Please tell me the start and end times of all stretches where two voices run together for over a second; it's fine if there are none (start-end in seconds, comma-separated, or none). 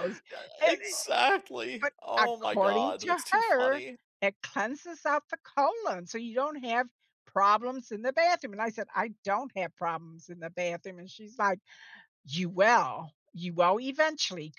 1.8-3.8